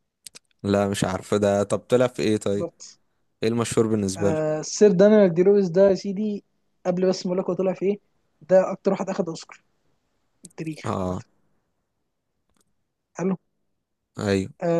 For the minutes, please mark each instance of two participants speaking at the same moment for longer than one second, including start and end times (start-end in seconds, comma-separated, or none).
none